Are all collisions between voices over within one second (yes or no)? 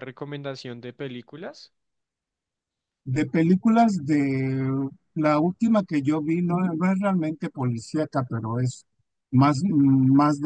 yes